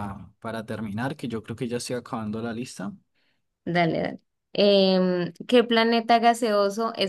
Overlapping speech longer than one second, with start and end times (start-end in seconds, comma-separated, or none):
none